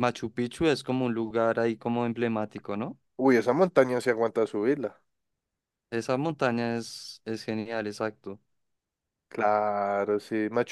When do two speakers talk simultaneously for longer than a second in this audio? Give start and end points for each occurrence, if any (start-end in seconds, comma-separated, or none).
none